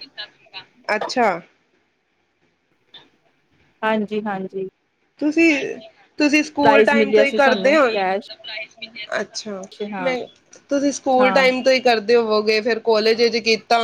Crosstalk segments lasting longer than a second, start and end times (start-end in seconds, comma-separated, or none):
6.6-7.9